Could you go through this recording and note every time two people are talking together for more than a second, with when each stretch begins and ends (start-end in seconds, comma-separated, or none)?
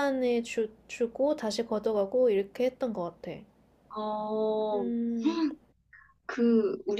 none